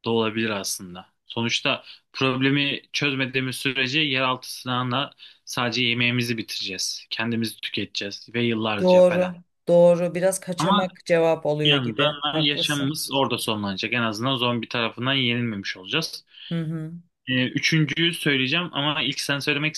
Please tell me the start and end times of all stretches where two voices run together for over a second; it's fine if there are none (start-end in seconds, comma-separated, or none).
11.7-13.0